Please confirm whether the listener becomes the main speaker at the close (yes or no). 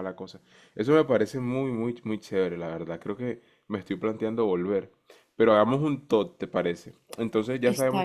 no